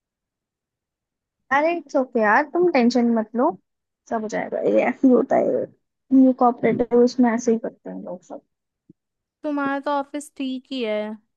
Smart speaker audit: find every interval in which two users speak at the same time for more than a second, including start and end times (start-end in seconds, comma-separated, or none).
none